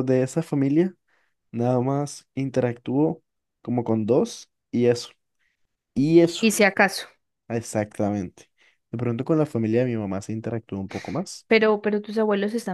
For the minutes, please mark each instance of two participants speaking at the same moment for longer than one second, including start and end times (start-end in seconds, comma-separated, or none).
none